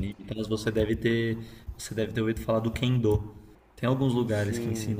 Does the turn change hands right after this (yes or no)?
no